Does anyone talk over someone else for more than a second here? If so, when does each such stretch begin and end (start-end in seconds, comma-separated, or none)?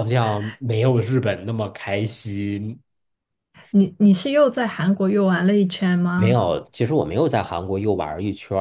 none